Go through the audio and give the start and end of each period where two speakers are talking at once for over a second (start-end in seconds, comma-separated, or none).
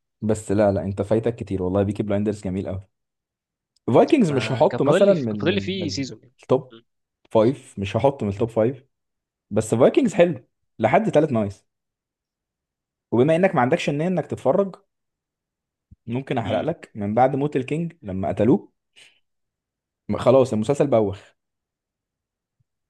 4.2-6.0